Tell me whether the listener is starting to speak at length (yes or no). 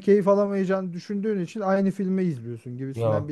no